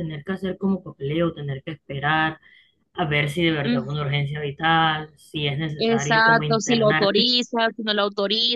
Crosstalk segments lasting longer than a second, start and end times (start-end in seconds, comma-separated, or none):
5.8-7.3